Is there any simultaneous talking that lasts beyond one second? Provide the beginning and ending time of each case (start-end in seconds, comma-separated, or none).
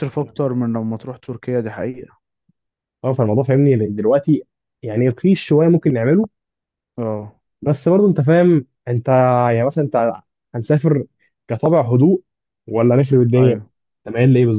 none